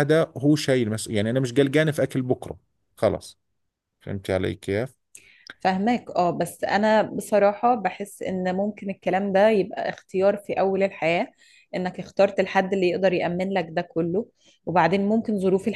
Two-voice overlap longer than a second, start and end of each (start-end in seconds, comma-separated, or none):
none